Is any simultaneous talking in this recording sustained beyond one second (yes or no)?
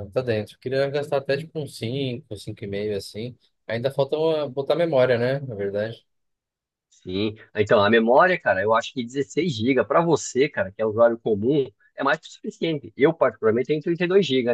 no